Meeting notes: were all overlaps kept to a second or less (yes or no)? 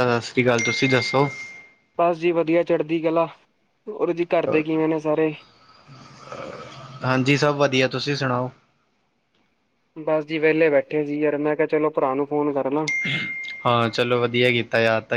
yes